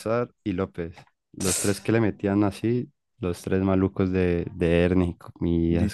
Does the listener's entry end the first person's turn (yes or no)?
yes